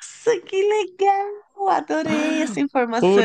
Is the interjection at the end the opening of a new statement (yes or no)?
yes